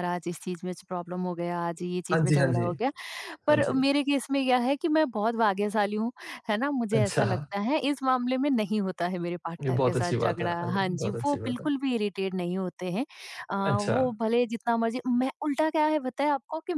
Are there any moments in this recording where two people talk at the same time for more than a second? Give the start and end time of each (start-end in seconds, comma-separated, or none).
9.6-11.7